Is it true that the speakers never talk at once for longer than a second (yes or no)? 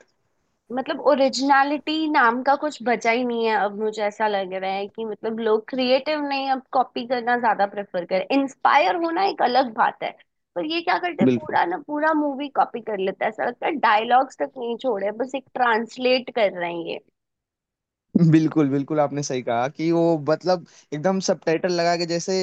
yes